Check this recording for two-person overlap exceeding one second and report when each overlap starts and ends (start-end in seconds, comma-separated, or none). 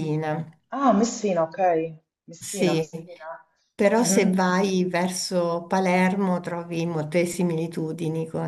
none